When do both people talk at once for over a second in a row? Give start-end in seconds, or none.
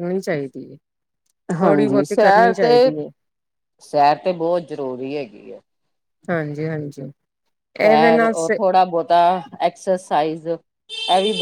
none